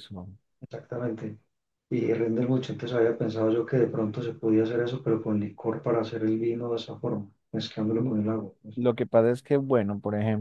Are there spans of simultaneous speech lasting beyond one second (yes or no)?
no